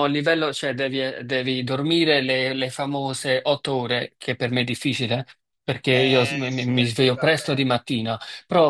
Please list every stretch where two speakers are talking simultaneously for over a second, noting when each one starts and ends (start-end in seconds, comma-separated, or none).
5.9-7.7